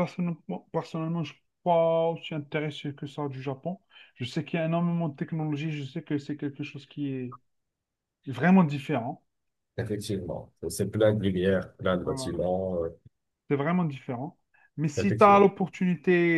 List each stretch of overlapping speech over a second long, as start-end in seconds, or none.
none